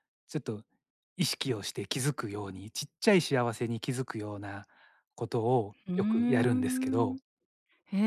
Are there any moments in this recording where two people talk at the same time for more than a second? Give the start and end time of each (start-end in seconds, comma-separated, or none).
5.9-7.2